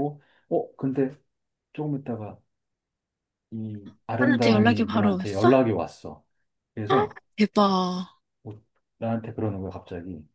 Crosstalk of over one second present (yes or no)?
yes